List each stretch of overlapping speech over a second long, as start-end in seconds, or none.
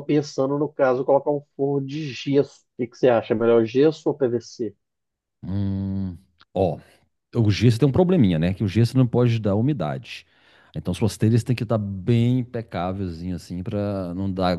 none